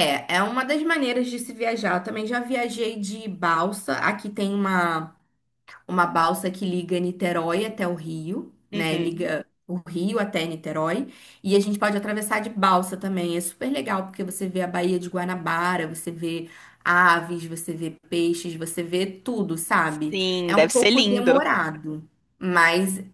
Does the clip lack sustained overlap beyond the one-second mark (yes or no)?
no